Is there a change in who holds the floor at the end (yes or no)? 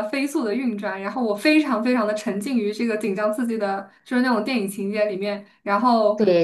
no